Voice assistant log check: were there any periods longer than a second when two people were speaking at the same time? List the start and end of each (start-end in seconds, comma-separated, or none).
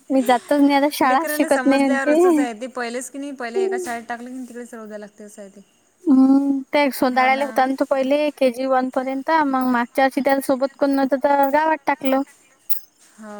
1.1-2.5